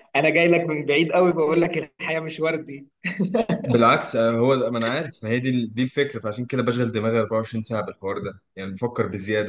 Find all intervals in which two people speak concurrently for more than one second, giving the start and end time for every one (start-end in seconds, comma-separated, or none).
none